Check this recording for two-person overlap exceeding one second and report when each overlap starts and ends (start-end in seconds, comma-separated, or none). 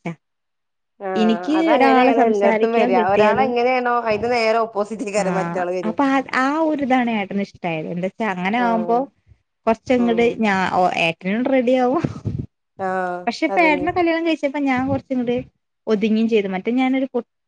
1.2-3.5